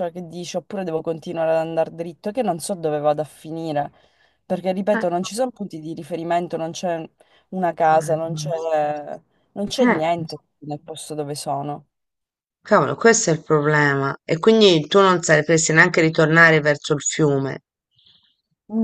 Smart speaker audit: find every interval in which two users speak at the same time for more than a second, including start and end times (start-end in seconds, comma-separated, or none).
none